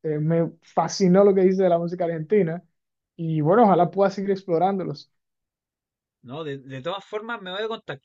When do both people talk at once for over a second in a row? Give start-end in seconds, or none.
none